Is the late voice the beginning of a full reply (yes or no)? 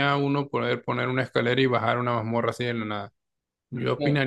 no